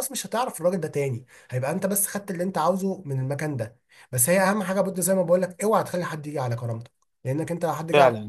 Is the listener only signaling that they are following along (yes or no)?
no